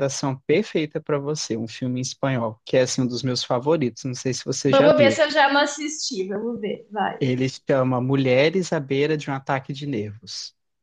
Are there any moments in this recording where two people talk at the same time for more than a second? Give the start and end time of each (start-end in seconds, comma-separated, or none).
none